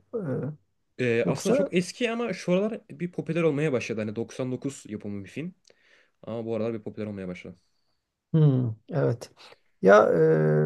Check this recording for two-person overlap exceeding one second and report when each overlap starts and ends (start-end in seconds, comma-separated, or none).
none